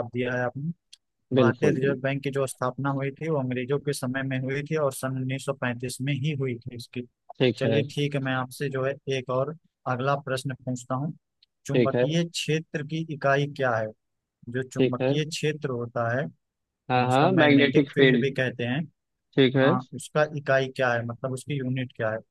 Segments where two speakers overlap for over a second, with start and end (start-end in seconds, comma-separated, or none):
16.9-18.3